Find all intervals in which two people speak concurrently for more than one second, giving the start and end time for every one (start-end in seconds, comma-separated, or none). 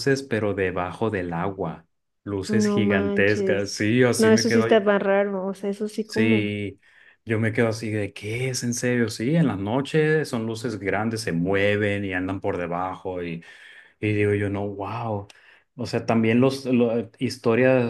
2.5-4.7